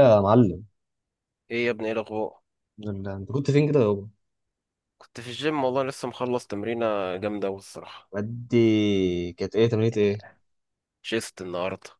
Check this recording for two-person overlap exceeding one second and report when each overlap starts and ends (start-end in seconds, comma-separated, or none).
none